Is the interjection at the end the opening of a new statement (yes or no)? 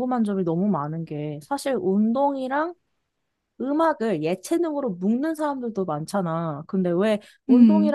no